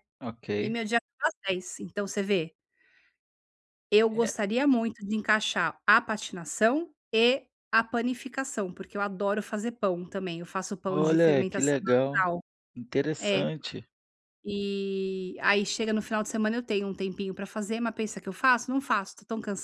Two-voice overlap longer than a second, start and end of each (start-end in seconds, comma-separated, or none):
10.9-12.2